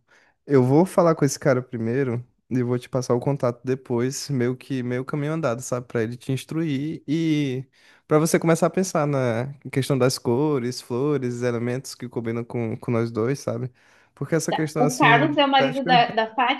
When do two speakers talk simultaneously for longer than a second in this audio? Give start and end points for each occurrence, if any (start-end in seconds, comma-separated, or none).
14.5-16.0